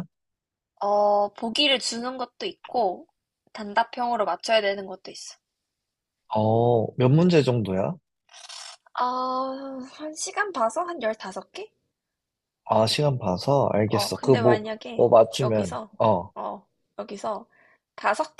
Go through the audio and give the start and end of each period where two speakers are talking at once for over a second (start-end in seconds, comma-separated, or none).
13.9-15.9